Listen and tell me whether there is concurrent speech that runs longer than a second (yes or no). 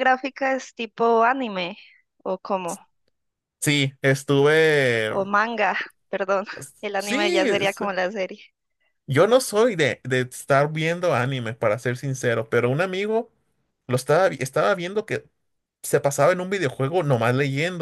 no